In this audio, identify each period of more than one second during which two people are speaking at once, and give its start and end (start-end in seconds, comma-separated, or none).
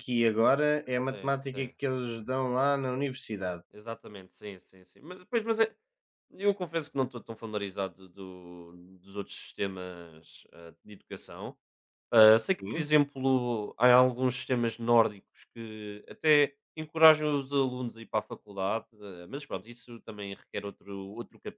none